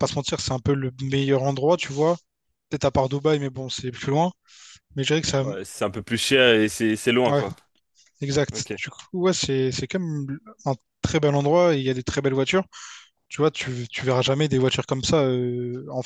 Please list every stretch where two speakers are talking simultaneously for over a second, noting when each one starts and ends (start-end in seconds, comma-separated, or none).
none